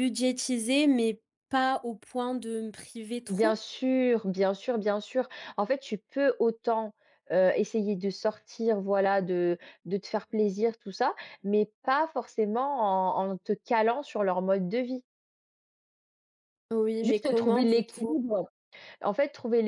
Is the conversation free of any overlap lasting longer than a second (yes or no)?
no